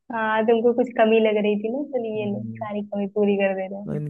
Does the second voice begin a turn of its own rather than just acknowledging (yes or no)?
yes